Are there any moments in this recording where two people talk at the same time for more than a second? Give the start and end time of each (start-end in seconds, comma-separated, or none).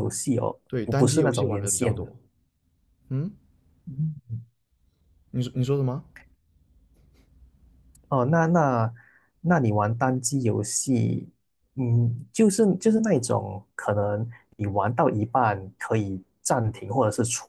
0.7-2.1